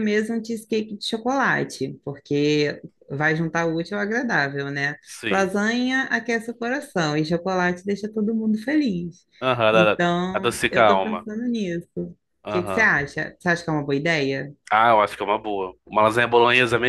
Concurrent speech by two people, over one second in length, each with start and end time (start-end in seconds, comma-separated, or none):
9.7-11.3